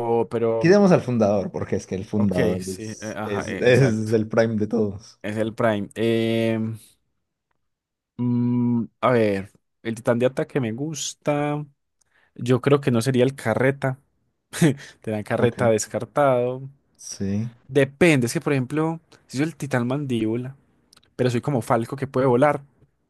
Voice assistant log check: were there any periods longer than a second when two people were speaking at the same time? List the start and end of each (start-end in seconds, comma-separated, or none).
2.1-4.1